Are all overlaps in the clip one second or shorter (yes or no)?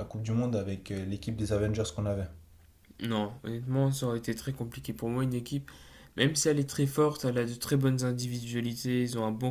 yes